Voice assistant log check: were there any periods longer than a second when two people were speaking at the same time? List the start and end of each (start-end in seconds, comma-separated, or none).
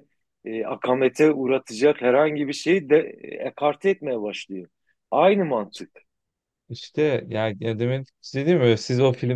none